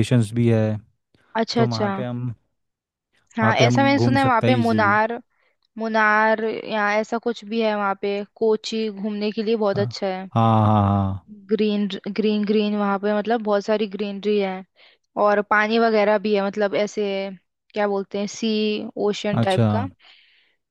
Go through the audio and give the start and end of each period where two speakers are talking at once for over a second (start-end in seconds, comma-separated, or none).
3.4-5.0